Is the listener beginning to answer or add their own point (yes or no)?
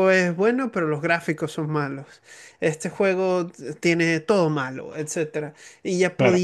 no